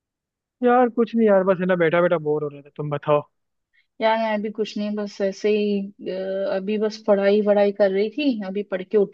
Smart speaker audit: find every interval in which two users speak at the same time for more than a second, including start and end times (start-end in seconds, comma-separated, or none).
none